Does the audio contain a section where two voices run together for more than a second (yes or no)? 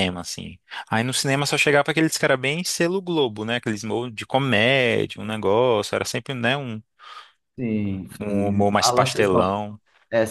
yes